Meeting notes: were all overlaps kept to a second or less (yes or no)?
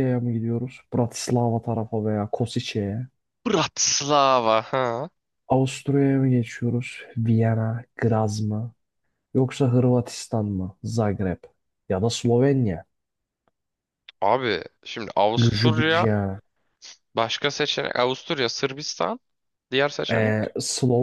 yes